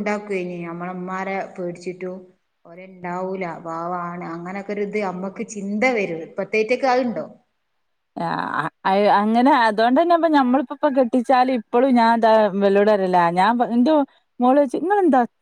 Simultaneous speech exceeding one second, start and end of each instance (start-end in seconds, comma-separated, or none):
none